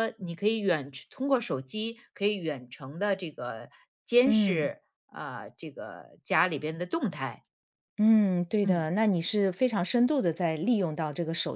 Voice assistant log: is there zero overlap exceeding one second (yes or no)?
yes